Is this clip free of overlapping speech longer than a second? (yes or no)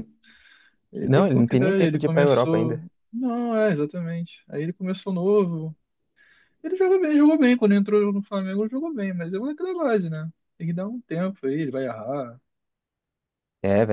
no